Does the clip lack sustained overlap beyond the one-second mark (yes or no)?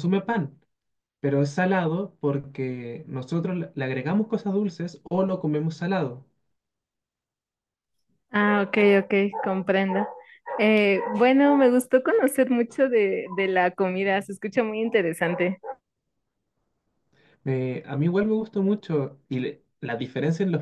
yes